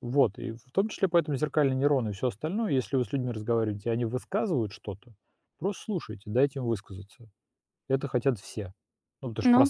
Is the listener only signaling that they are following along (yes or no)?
no